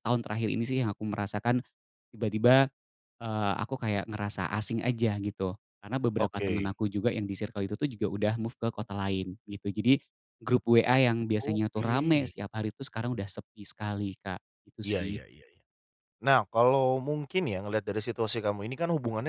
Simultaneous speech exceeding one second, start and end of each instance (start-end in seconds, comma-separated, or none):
none